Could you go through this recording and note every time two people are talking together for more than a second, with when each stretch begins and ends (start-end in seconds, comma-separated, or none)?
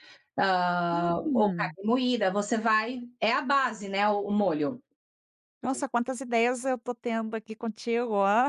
none